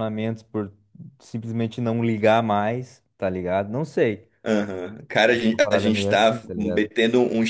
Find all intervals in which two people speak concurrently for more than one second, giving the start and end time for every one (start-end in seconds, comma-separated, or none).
5.5-6.9